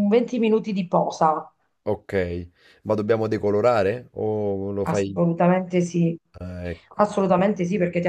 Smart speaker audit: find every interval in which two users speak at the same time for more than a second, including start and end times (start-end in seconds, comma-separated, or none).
none